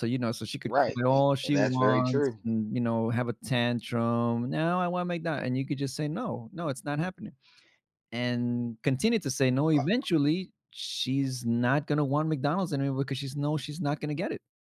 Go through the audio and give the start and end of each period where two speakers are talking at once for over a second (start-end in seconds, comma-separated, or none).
0.7-2.4